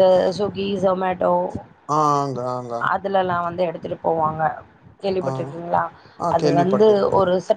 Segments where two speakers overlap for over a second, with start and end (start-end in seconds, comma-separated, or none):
none